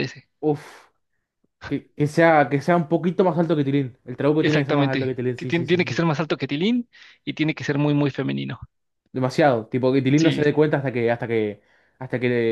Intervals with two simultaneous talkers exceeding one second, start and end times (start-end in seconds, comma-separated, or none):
4.4-6.0